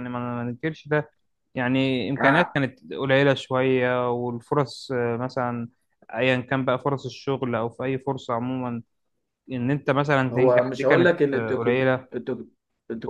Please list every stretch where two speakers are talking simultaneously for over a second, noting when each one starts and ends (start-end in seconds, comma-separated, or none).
10.3-12.1